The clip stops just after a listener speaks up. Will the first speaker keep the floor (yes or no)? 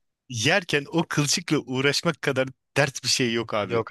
yes